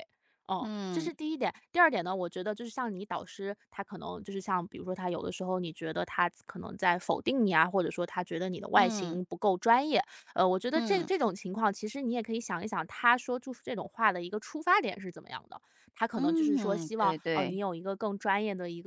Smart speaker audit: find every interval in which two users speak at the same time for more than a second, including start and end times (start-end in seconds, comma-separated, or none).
16.1-17.6